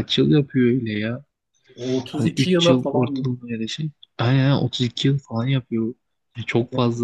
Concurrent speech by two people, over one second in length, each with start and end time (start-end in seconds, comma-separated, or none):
2.1-3.3